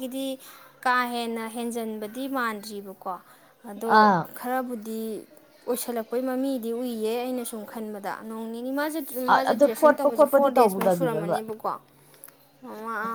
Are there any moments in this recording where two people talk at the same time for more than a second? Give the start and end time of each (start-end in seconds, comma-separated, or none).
9.5-11.4